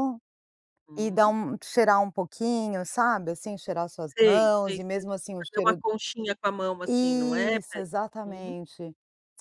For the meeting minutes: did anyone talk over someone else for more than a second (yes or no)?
yes